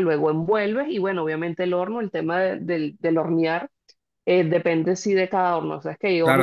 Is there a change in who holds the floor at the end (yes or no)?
yes